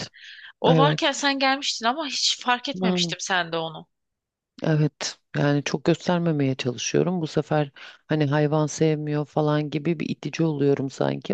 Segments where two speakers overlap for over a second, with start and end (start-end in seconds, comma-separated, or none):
none